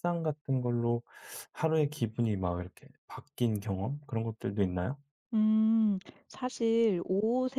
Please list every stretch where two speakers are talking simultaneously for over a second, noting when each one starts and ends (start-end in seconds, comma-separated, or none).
none